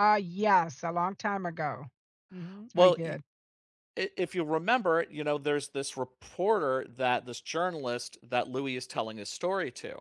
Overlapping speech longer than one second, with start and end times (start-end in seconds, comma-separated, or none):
none